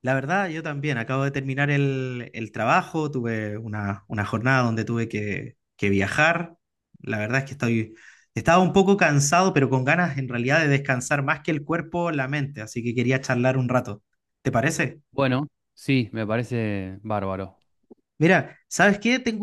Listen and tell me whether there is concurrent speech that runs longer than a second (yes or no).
no